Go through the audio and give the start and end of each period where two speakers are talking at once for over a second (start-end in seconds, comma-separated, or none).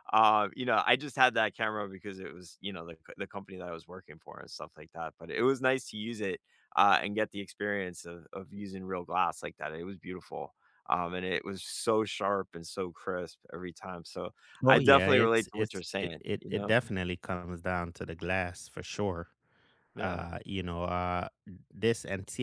14.7-16.7